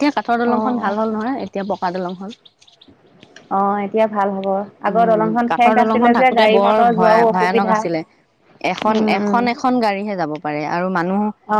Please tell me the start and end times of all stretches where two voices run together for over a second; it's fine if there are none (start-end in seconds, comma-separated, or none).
4.9-7.8